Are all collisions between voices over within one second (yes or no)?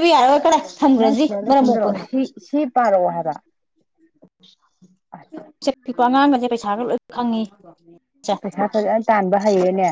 yes